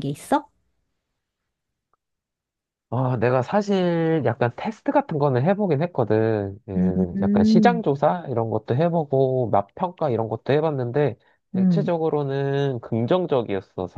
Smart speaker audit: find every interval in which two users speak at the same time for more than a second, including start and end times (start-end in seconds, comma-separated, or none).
none